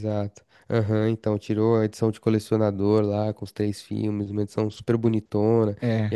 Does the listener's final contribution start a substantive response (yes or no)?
no